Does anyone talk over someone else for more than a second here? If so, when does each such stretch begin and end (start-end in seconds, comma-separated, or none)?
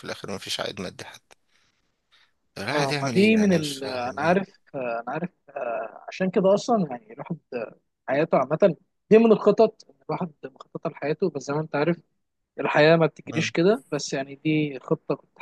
2.7-4.3